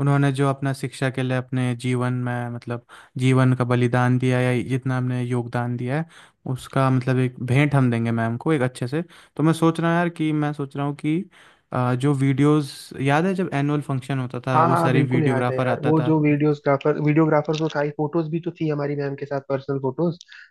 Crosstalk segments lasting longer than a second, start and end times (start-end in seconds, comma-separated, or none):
14.5-16.2